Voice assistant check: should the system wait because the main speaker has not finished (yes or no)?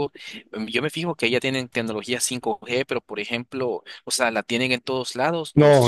no